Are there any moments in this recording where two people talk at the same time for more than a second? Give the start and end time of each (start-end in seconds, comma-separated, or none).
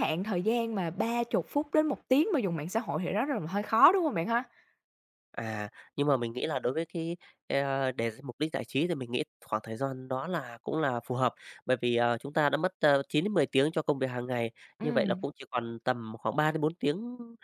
none